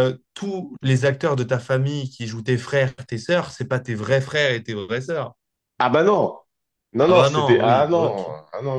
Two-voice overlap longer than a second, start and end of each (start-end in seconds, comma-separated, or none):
7.0-8.3